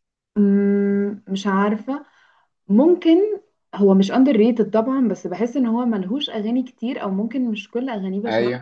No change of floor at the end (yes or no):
yes